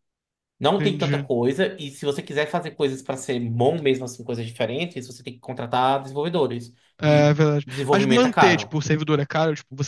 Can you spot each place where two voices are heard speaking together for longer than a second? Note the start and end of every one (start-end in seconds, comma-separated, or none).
7.0-8.7